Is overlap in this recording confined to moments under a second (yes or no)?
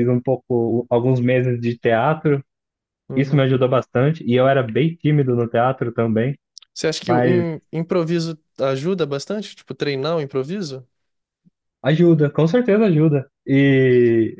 yes